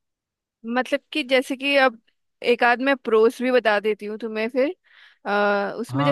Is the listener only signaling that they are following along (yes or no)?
yes